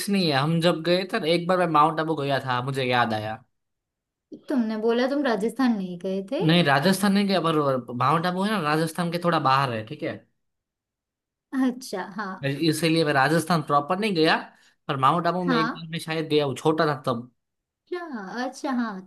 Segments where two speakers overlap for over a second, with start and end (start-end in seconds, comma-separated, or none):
none